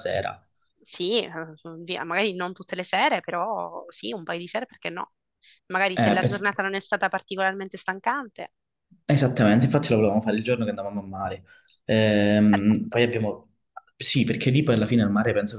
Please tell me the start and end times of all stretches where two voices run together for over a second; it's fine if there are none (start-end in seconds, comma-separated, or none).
none